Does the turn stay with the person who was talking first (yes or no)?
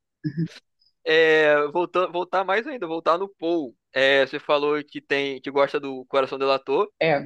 yes